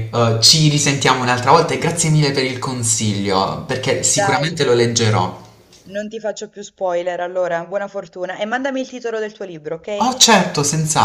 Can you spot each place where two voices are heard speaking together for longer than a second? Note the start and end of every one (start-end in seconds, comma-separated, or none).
none